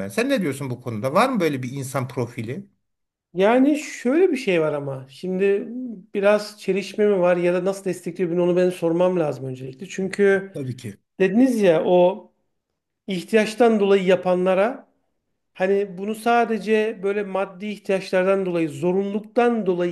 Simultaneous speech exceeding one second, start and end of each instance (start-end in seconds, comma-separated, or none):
none